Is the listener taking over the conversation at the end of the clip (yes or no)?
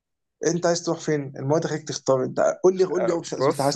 yes